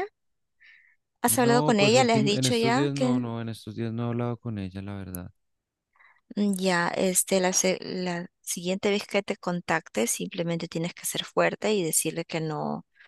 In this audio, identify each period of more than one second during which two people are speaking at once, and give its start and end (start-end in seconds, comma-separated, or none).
1.3-3.3